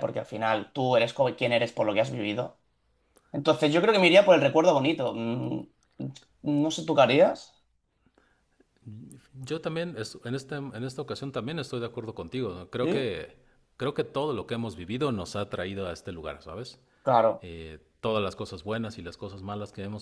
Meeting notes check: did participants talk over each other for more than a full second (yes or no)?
no